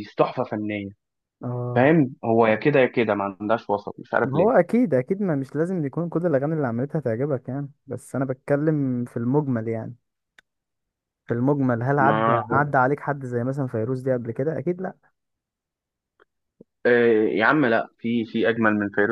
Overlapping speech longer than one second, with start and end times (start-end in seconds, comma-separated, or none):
none